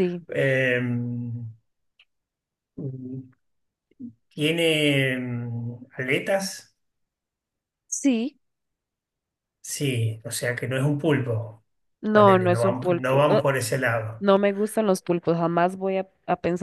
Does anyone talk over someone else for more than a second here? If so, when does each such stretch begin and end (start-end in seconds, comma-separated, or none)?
12.1-13.5